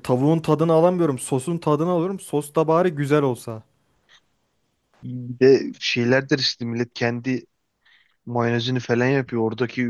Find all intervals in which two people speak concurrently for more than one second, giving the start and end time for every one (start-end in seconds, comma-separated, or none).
none